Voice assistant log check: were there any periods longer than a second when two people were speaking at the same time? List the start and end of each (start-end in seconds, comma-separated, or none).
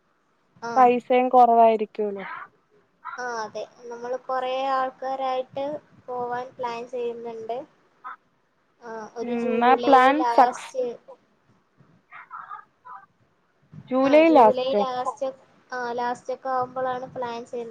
none